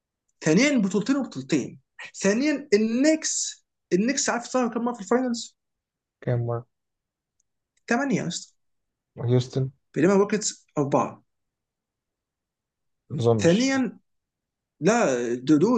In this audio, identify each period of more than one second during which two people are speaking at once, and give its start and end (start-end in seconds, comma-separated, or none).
none